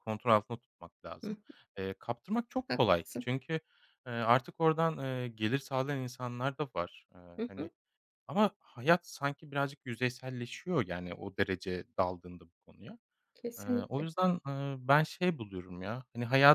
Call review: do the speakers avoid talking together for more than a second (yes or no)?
yes